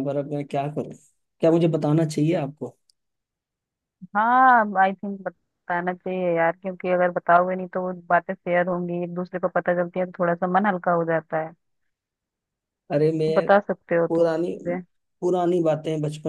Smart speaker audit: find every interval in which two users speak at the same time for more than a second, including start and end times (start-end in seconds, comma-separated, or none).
none